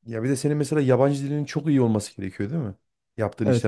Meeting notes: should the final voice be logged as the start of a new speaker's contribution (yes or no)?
yes